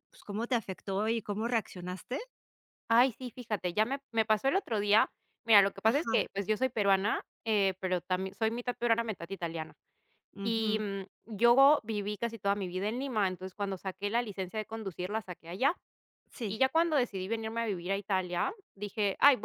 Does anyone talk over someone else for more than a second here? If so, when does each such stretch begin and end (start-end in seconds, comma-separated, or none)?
none